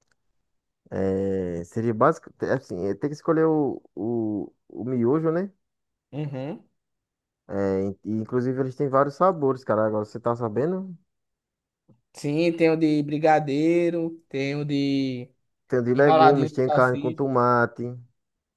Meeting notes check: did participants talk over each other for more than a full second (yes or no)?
yes